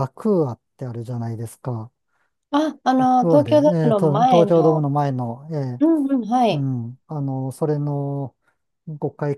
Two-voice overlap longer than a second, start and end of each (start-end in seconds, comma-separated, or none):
3.0-4.8